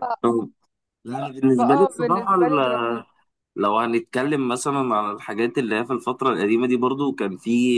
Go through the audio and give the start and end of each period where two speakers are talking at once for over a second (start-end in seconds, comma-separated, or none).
1.6-3.0